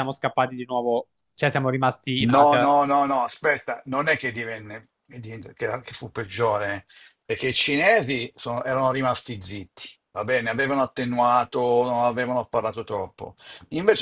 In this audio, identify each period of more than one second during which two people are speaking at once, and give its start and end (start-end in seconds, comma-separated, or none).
none